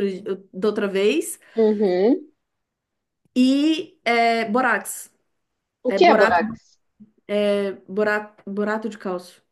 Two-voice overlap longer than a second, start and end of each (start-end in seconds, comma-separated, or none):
none